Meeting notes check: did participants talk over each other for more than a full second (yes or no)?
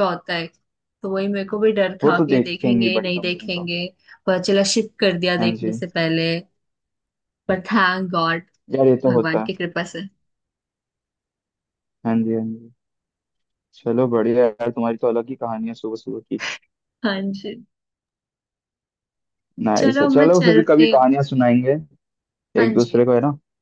yes